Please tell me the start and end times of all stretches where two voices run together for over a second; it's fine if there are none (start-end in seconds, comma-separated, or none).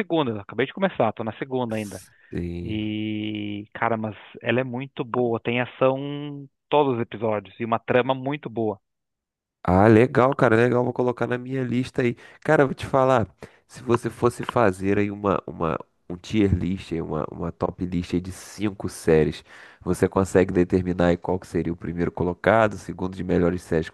none